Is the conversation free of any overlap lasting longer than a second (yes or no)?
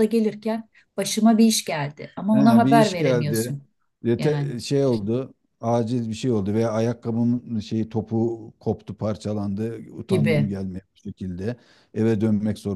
no